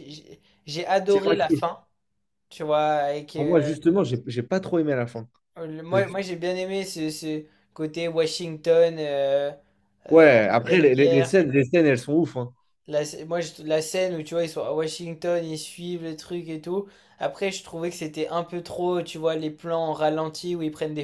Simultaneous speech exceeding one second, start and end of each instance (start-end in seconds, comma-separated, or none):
10.1-11.4